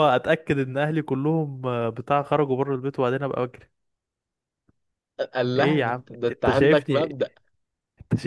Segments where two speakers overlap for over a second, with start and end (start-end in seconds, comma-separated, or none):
5.5-7.2